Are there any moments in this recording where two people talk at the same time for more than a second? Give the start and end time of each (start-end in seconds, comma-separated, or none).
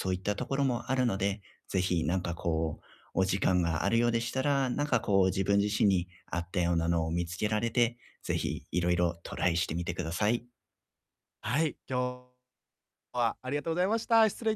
none